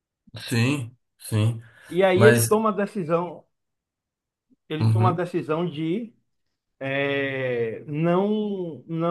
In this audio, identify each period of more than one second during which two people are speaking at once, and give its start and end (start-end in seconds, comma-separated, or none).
none